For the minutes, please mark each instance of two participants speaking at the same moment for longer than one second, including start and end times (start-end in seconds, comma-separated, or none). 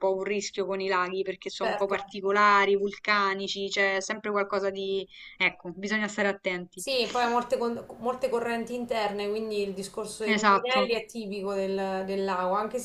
none